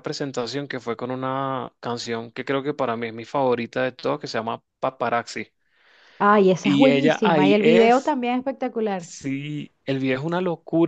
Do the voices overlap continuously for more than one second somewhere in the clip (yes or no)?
yes